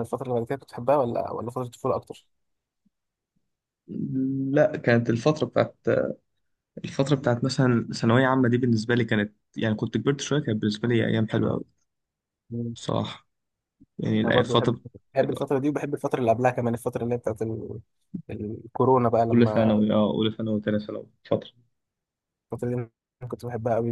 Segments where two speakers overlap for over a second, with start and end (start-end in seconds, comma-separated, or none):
none